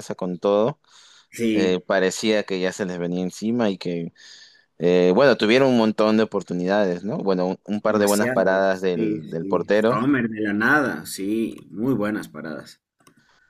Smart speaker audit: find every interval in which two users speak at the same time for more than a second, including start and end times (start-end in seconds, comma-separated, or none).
7.9-10.0